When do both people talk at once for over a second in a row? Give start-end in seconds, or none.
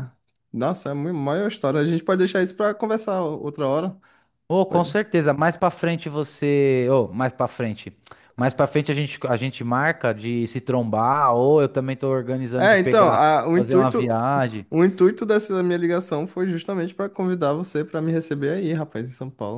12.6-14.2